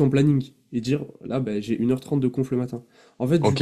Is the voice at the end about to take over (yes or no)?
yes